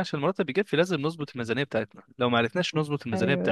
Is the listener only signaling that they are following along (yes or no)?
yes